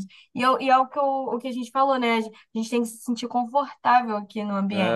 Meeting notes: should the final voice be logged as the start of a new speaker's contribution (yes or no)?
yes